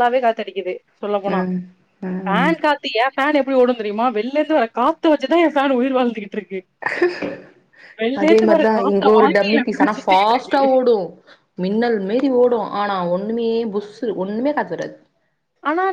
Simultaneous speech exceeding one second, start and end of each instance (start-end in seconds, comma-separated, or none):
8.8-10.7